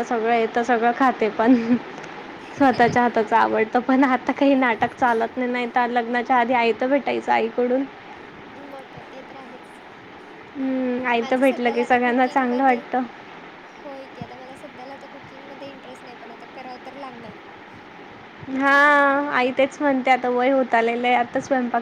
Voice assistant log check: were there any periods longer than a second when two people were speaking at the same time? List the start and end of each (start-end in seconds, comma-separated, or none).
11.2-12.8